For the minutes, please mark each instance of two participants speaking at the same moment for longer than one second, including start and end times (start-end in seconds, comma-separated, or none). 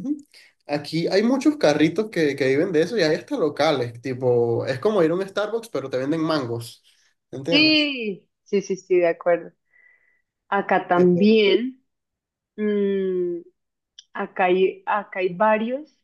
none